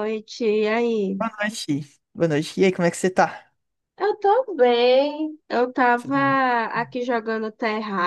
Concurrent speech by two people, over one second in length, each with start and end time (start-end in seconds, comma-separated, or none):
none